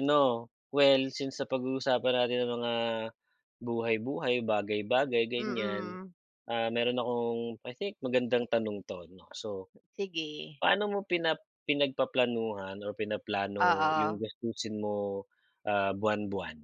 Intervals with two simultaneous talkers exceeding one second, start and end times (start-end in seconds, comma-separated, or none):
none